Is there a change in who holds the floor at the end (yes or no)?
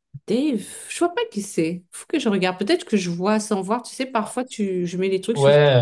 yes